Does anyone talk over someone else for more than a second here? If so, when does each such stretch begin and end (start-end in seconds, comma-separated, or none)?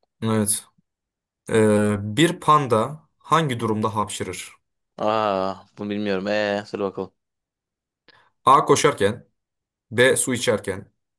none